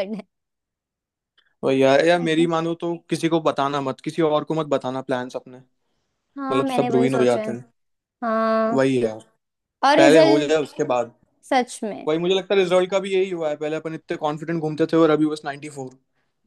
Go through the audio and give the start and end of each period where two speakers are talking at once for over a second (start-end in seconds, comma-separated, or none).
6.4-7.6